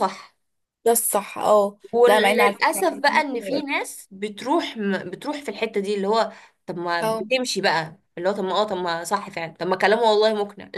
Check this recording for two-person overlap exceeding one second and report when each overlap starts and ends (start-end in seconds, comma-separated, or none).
1.9-3.6